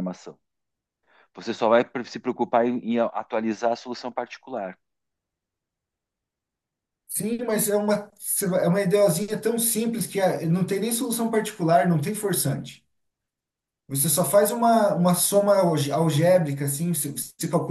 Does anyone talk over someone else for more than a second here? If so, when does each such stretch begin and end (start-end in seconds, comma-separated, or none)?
none